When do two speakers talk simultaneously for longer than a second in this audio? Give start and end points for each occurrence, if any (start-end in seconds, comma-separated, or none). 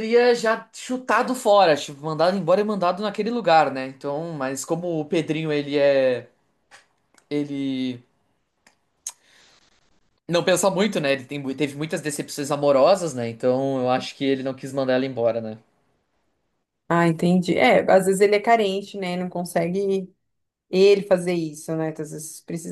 none